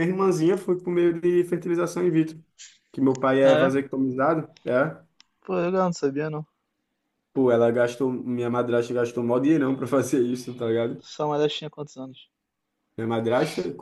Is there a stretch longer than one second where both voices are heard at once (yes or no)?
no